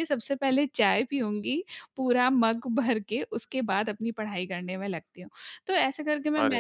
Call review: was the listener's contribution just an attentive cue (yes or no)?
yes